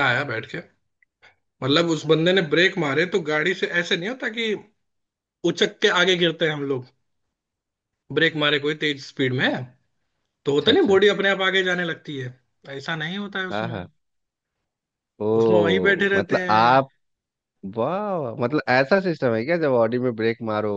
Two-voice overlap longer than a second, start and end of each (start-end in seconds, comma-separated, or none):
15.4-16.8